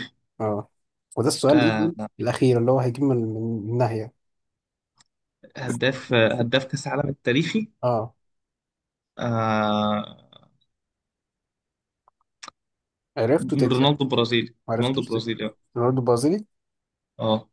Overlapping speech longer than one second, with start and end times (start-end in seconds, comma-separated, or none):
none